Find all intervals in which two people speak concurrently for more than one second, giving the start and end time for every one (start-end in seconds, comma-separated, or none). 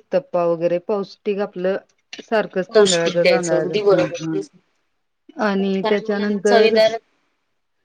2.7-4.4, 5.5-6.7